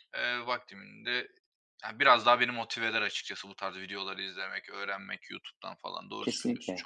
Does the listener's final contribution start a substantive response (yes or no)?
yes